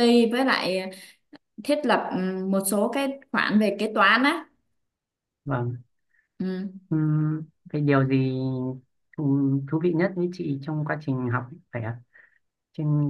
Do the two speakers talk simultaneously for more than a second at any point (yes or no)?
no